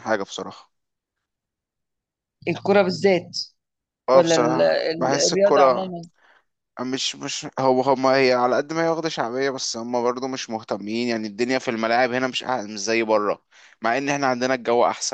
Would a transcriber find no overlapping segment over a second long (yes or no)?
no